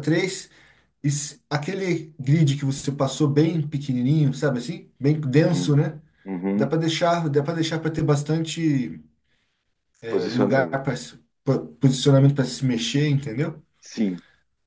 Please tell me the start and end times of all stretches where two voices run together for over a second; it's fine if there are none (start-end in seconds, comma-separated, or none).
none